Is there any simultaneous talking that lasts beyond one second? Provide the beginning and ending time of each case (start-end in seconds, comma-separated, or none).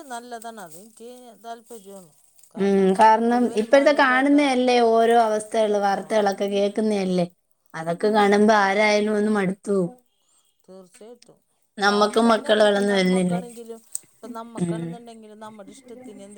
3.0-4.4, 11.9-13.4